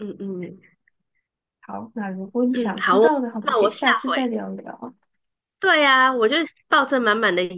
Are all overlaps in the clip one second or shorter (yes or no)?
no